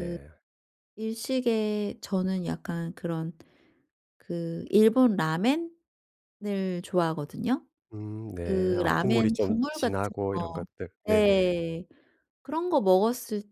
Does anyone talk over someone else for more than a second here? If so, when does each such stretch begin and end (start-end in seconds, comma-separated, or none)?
8.4-10.4